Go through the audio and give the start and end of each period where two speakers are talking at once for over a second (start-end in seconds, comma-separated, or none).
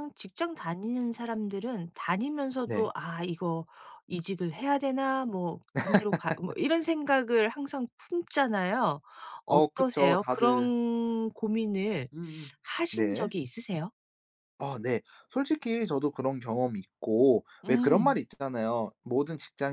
9.5-10.7